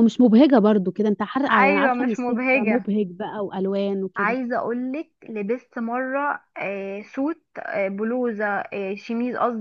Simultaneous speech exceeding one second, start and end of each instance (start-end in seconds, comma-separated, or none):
1.5-2.9